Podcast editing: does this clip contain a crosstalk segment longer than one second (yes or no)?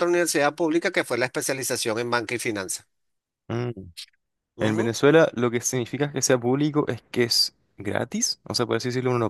no